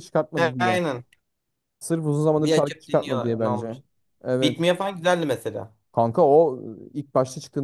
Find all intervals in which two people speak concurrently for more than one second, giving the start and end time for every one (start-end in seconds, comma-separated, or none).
2.3-3.8